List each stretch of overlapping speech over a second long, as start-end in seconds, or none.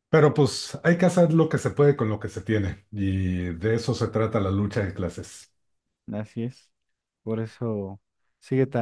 none